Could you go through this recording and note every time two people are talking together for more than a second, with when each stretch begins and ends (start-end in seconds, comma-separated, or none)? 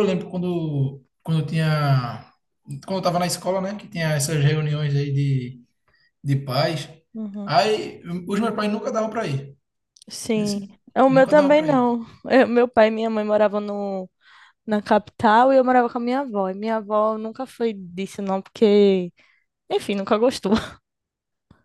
10.3-11.9